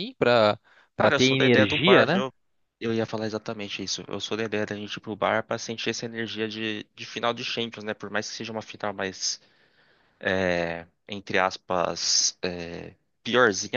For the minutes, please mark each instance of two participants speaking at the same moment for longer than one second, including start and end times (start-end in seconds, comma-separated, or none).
0.9-2.2